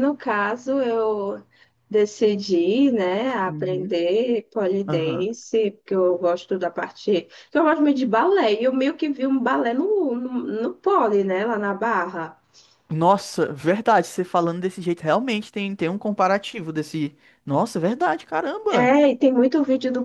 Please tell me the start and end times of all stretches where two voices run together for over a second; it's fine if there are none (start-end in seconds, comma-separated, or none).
none